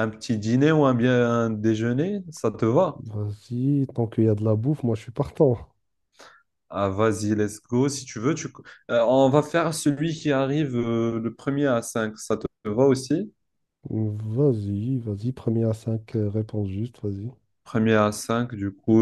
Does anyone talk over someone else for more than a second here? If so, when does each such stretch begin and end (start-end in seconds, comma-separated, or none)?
none